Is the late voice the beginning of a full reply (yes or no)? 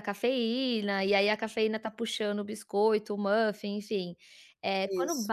no